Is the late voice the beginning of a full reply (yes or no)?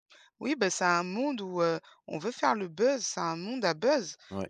no